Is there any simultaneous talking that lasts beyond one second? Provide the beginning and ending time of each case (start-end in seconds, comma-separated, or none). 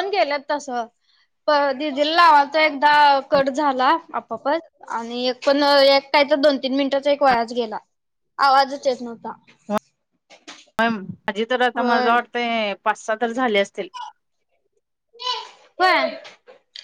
none